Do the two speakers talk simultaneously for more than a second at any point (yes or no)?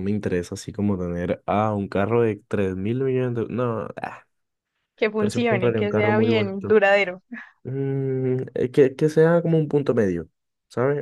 yes